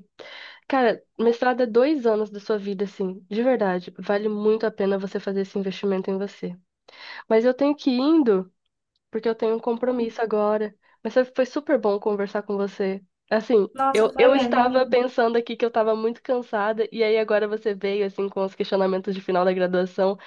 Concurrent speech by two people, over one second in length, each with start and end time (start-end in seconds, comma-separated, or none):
13.7-15.0